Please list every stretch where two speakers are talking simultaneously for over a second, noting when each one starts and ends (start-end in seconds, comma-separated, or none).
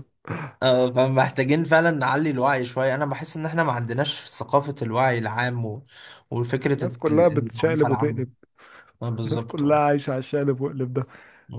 6.8-8.2